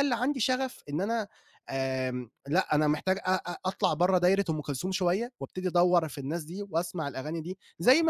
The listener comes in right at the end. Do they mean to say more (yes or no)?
no